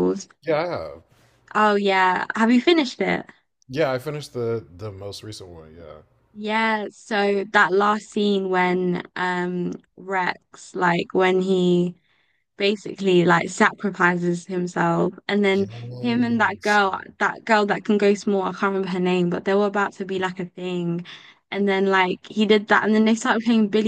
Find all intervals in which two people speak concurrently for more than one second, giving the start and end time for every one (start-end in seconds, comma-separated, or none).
15.5-16.8